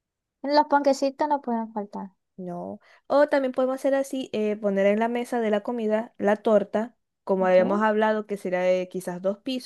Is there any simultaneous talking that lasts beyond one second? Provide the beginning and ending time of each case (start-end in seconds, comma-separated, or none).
none